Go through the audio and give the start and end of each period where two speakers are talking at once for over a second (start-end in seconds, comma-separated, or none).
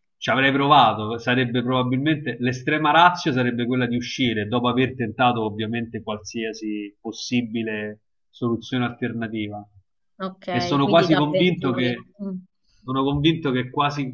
10.5-11.9